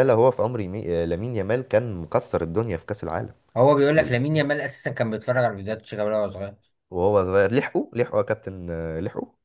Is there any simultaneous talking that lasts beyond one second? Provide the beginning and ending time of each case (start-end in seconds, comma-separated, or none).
none